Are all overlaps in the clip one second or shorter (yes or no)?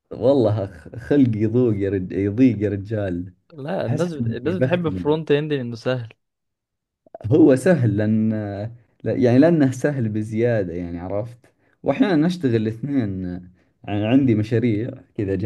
no